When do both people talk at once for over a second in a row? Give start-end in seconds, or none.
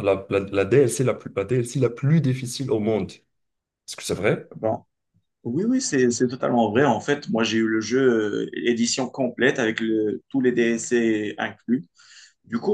none